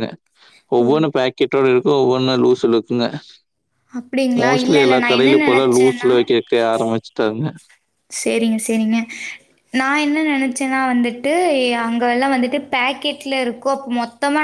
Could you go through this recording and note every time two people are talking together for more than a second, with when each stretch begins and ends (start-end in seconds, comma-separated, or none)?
4.4-6.2